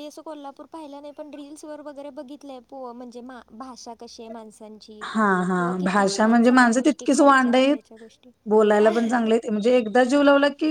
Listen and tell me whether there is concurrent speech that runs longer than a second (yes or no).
yes